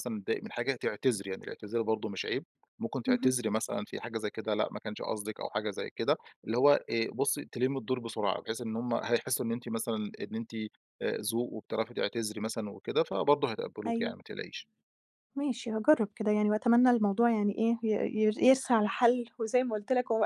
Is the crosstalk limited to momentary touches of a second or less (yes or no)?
yes